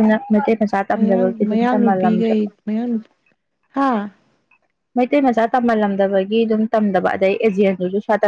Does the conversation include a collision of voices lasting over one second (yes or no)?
yes